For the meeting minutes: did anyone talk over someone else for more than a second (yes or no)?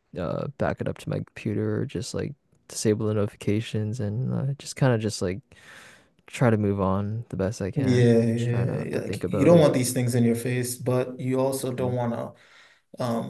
yes